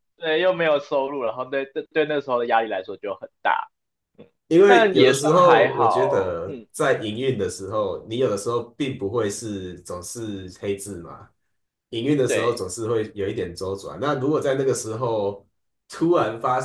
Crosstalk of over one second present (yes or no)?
yes